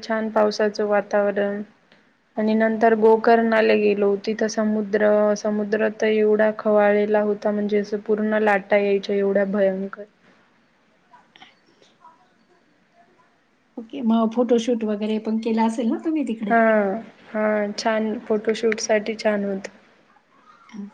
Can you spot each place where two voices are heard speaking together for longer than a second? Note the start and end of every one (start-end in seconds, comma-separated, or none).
none